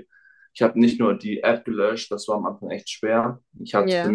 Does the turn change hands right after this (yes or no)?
no